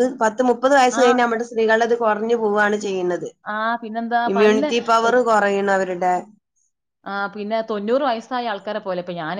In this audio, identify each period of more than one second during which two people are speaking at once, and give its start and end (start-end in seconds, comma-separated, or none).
none